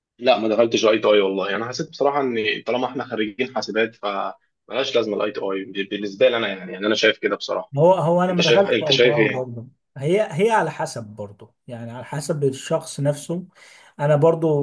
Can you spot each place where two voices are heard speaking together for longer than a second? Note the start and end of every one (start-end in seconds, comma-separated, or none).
8.3-9.5